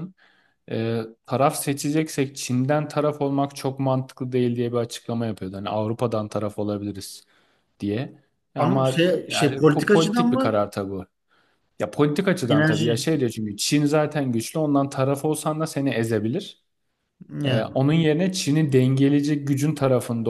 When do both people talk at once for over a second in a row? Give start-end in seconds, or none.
8.6-10.6